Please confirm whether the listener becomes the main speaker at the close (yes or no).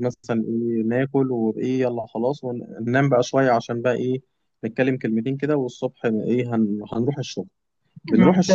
no